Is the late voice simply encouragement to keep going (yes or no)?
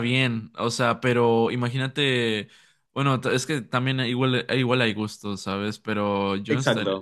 yes